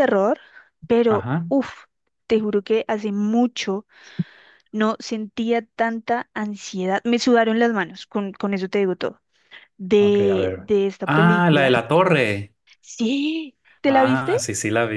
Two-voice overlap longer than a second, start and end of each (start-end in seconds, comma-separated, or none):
10.0-11.7